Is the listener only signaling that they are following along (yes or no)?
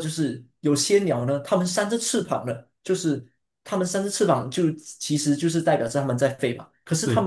yes